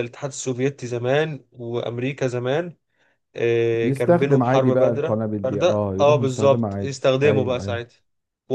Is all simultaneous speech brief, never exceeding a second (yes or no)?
no